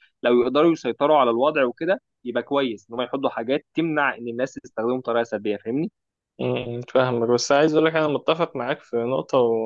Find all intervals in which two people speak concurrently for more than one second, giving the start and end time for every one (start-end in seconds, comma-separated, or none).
none